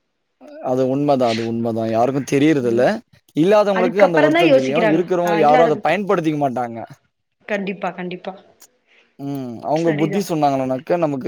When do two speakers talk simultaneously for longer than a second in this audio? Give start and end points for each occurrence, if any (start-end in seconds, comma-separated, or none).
3.8-5.7